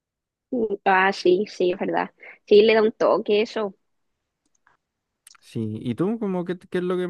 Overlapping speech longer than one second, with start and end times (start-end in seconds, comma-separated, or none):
none